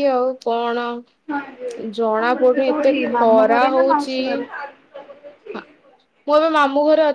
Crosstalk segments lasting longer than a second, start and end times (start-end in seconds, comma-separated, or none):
2.0-4.2